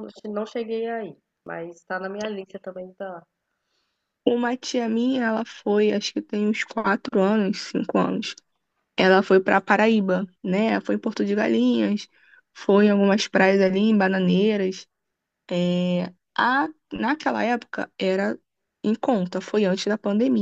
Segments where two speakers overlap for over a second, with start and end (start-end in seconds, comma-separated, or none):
none